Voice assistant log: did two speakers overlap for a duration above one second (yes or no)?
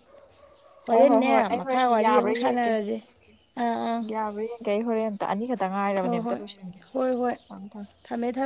yes